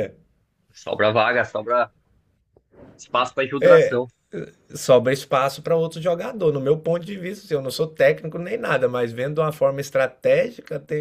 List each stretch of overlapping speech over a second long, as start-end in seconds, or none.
none